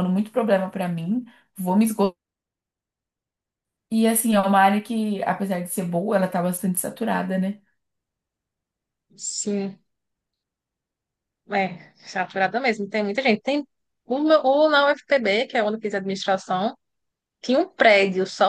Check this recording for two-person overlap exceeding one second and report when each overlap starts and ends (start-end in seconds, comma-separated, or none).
none